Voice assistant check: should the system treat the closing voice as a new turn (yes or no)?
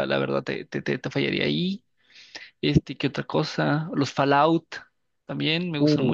yes